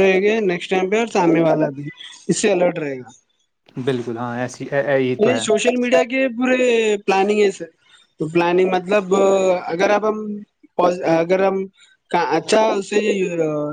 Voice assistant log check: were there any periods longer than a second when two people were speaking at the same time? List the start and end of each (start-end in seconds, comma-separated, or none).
none